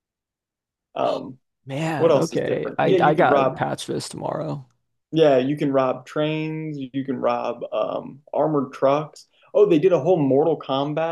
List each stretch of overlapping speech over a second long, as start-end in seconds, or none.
2.0-3.6